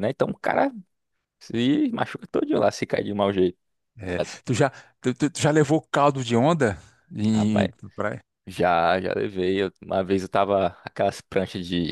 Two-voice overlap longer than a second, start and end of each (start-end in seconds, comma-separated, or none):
none